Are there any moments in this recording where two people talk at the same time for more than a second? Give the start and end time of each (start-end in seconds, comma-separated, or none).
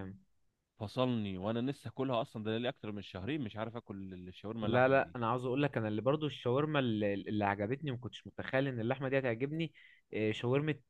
none